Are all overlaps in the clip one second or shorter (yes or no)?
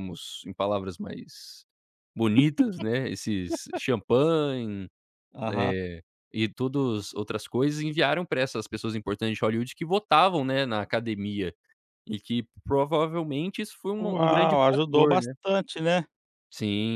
no